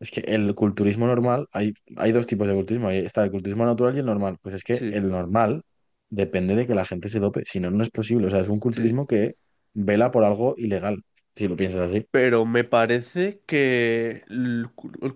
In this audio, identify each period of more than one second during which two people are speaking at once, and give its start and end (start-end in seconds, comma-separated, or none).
none